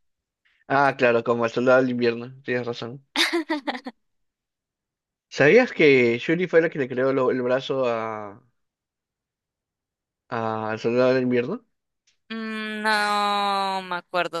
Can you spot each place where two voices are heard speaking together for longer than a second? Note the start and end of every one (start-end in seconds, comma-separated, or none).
none